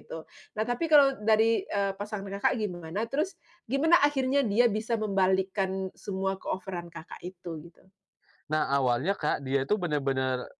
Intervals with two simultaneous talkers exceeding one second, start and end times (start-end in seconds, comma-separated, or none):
none